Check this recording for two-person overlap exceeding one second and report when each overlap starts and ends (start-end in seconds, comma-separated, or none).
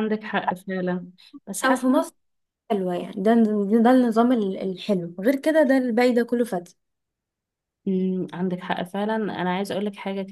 none